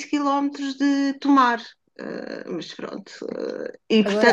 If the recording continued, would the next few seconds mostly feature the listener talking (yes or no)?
no